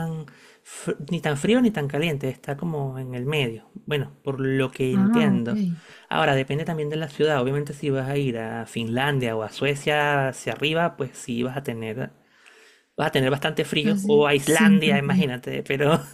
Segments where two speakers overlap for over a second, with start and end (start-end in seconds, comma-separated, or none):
13.8-15.3